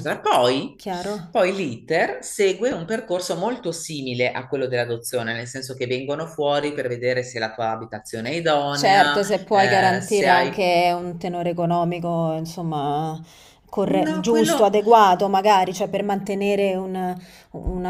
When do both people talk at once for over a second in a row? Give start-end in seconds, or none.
8.7-10.7